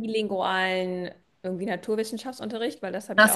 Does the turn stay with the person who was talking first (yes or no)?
no